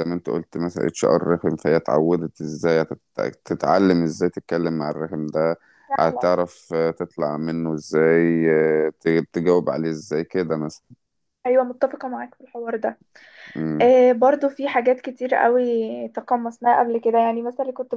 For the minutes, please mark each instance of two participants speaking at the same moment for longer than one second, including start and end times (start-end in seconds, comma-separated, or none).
none